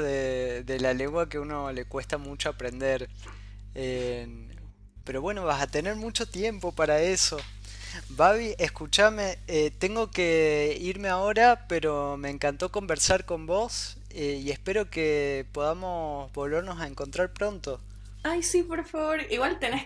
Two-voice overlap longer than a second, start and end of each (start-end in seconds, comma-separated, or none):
none